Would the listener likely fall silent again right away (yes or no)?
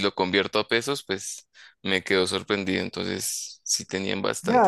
no